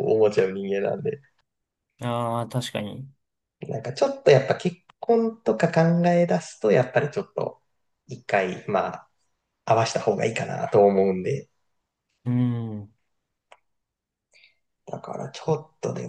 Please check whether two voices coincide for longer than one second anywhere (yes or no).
no